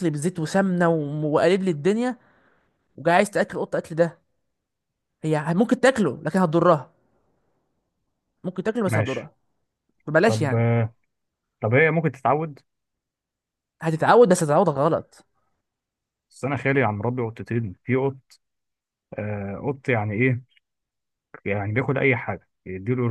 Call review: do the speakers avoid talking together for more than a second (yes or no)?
yes